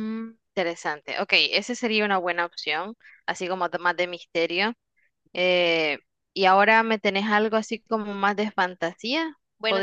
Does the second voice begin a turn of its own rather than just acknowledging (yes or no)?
yes